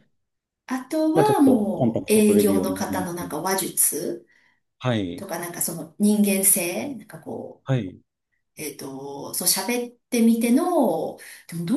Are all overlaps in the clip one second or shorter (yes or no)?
no